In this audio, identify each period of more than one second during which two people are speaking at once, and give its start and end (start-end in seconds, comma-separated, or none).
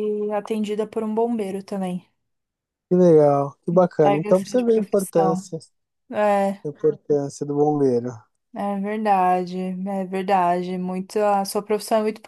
4.0-5.4